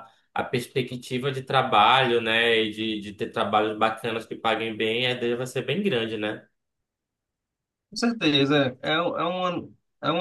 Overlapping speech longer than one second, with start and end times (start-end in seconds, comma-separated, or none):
none